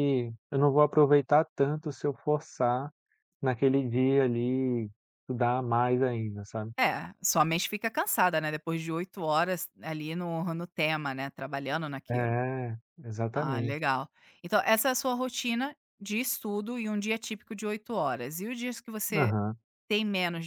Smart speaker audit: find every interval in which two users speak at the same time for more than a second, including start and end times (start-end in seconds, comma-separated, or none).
none